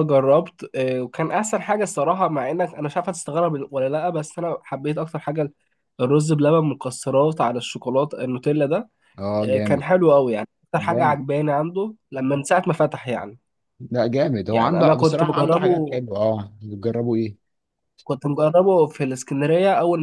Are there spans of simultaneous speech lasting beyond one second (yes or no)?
yes